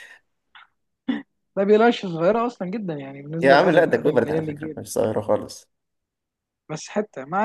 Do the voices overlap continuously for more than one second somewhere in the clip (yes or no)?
yes